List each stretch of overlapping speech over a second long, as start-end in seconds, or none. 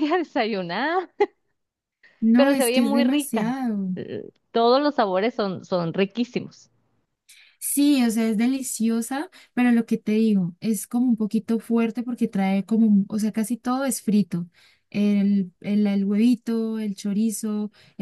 2.4-3.6